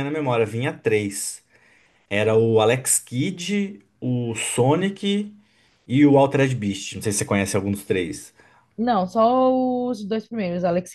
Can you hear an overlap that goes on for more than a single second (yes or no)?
no